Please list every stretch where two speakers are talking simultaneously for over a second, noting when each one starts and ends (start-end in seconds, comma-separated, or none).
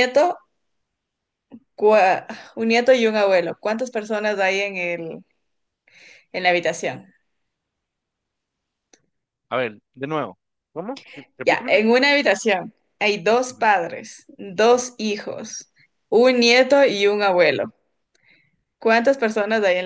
none